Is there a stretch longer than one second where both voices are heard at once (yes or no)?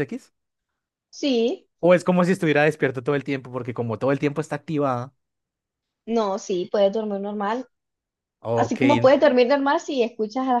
no